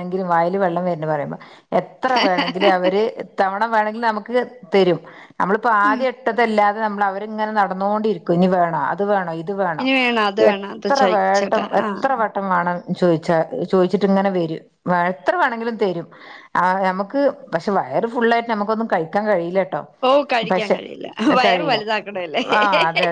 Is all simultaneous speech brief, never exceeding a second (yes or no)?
no